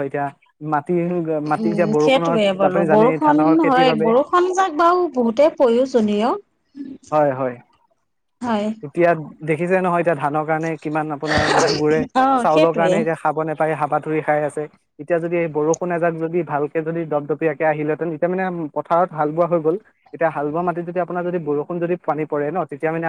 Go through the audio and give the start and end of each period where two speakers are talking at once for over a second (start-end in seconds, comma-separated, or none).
1.6-4.1